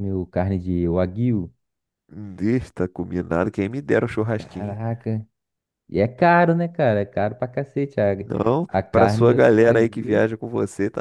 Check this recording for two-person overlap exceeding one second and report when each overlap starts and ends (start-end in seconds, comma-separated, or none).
8.7-10.3